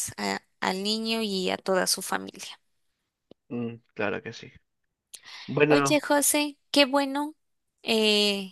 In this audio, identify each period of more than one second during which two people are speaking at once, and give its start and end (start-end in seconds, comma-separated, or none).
none